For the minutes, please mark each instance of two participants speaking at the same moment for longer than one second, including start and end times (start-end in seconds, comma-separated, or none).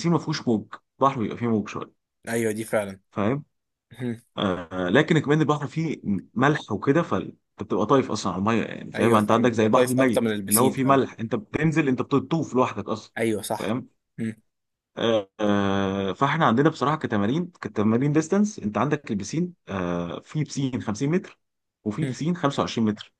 8.9-11.0